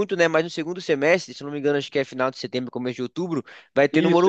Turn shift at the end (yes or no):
no